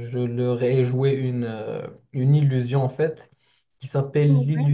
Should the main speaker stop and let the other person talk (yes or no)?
no